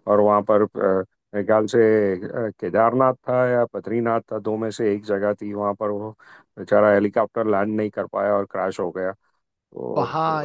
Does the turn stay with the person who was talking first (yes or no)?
no